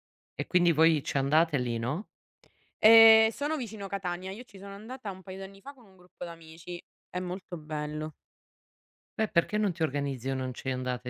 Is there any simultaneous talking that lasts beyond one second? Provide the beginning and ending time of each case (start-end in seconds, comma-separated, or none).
none